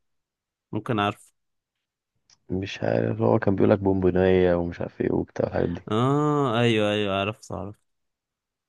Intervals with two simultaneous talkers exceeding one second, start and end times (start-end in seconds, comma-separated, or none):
none